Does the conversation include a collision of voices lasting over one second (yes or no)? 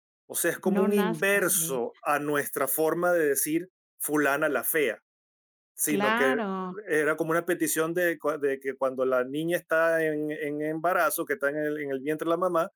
yes